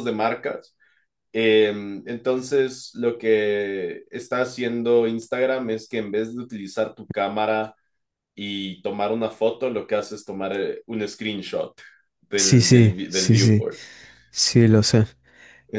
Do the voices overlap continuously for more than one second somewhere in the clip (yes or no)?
yes